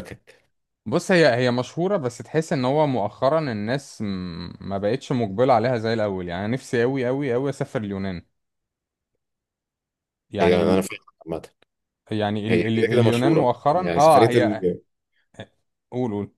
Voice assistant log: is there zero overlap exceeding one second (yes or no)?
no